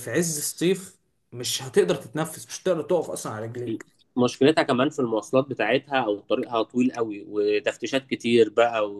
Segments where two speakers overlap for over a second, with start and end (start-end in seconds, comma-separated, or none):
none